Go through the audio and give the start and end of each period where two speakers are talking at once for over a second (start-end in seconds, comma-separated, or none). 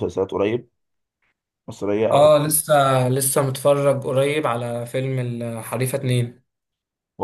none